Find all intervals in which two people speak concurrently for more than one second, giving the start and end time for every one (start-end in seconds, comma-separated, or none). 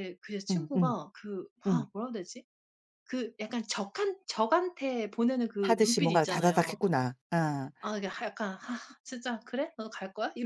5.6-6.8